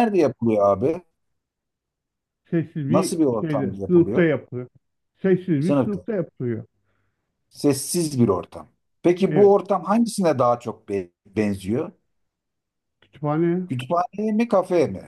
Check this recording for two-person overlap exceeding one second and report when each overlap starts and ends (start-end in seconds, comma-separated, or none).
2.9-4.3